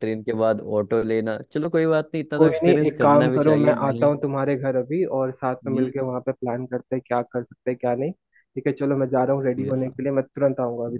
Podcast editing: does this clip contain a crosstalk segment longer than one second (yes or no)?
yes